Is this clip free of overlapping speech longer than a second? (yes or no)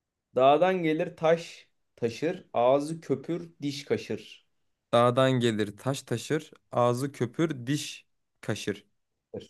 yes